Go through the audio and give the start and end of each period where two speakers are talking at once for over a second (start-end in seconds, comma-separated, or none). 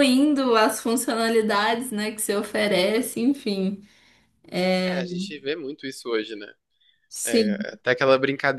none